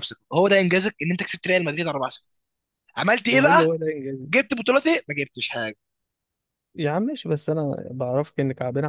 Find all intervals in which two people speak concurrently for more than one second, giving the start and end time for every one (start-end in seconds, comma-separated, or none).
none